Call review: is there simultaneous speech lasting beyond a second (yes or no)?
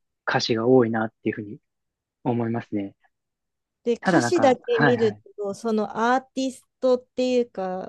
yes